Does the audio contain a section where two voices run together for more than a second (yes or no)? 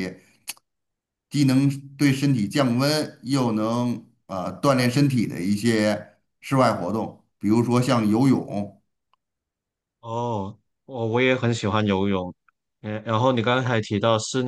no